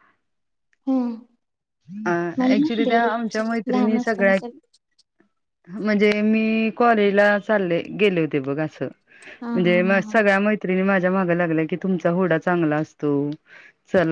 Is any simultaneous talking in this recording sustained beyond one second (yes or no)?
yes